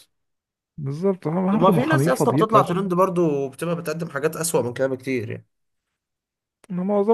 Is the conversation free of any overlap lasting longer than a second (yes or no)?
no